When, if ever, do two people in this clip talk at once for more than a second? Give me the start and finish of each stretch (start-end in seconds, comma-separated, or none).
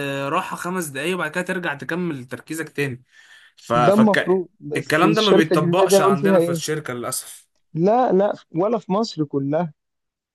3.7-6.6